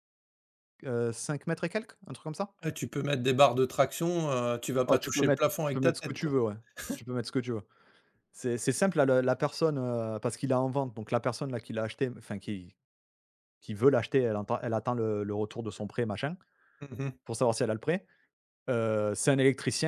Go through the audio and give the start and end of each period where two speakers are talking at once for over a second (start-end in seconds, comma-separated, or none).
4.9-6.4